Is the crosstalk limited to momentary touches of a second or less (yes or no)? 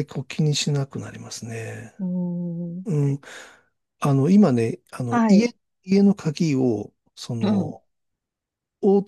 yes